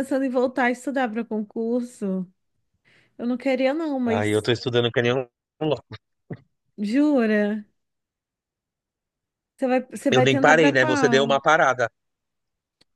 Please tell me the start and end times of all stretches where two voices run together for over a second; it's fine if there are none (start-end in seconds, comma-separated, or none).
10.1-11.3